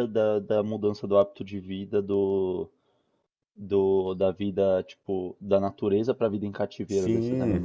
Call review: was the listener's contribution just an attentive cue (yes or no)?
no